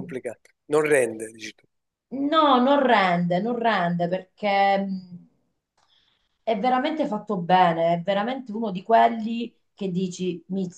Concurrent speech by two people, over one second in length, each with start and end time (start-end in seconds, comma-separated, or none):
none